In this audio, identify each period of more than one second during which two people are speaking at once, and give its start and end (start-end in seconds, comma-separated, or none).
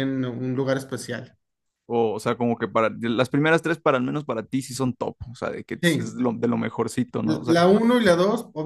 none